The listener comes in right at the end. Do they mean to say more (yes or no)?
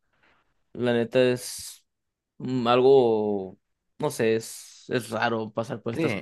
yes